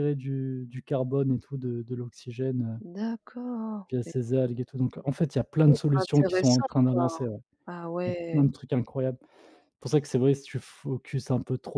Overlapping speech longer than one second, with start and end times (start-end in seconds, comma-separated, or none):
5.6-7.2